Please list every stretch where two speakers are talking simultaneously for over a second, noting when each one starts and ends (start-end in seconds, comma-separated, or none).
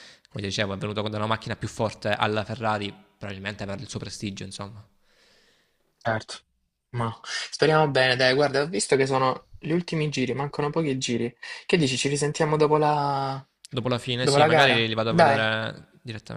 14.2-15.4